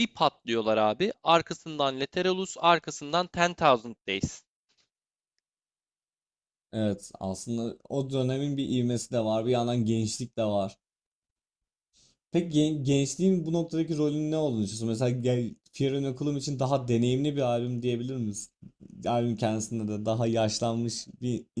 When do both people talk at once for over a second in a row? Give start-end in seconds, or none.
none